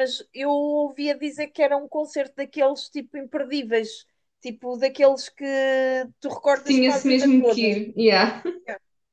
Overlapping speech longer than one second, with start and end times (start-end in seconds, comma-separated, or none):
6.5-7.8